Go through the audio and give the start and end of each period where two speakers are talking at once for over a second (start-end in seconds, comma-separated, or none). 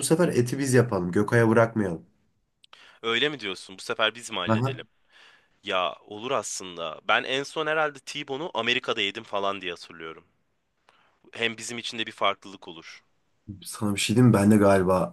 none